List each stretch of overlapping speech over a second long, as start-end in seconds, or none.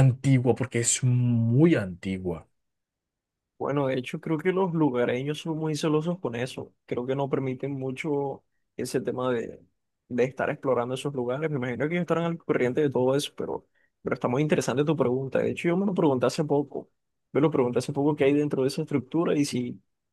none